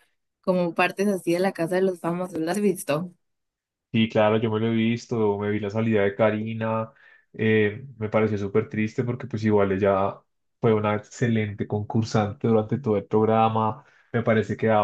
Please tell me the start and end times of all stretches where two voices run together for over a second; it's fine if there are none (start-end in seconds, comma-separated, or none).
none